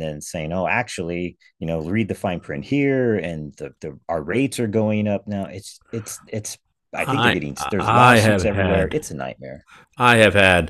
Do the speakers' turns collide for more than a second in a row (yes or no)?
yes